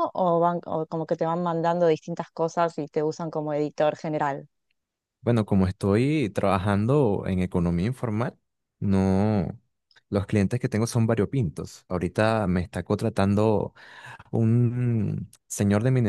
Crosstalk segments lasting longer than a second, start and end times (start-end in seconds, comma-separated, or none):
none